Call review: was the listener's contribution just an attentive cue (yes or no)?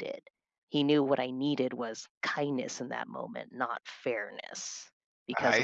no